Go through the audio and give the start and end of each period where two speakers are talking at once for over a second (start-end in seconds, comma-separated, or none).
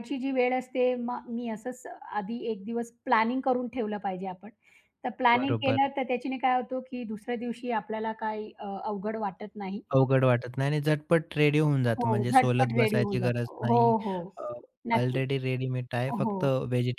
12.0-13.9